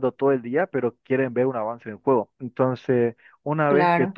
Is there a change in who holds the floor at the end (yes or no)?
no